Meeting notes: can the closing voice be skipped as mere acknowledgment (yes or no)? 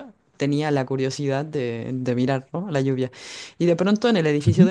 yes